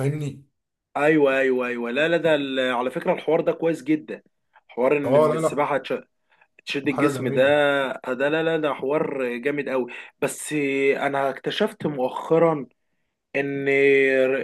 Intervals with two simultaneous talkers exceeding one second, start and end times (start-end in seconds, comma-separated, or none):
none